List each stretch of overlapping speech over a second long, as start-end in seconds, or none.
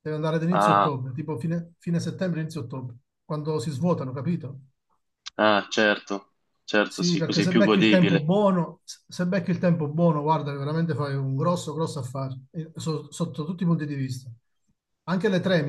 6.9-8.2